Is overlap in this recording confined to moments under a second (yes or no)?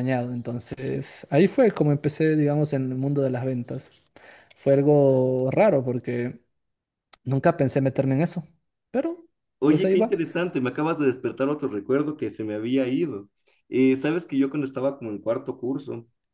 yes